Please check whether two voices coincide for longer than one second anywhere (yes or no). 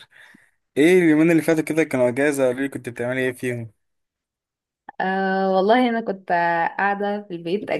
no